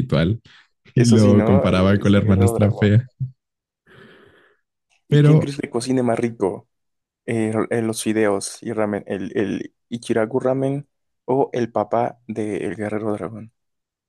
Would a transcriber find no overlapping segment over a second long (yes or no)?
no